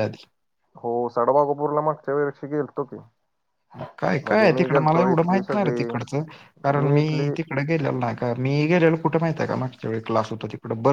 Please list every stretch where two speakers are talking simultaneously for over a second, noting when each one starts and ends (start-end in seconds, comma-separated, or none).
4.2-5.9